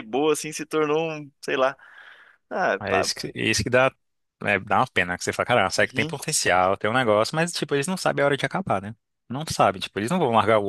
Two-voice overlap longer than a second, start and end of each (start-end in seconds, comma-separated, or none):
none